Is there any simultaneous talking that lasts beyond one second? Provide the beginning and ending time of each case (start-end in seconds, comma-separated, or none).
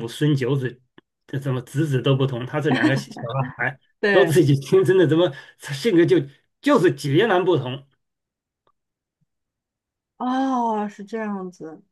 none